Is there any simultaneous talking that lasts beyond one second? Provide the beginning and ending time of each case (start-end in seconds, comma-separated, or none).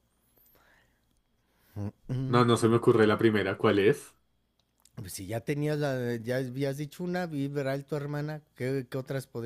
none